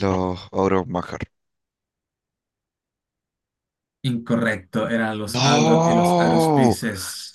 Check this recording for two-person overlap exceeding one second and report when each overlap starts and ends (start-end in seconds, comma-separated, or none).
5.3-6.8